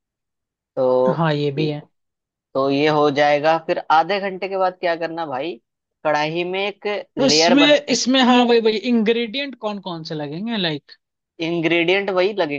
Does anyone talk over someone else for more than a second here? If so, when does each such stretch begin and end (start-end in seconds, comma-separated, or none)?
none